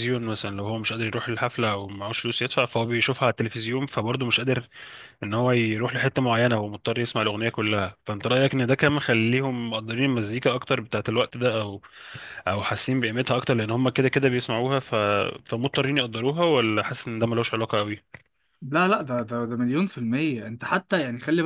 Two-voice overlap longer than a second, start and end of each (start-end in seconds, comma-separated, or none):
none